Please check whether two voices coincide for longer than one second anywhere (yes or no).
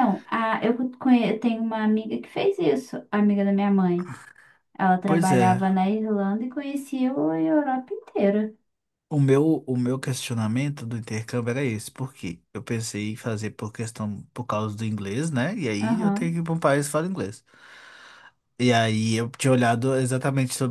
no